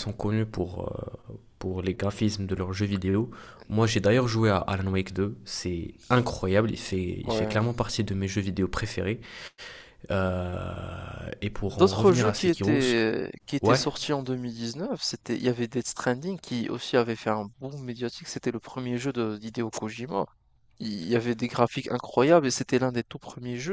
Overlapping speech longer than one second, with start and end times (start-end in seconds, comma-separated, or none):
11.7-12.9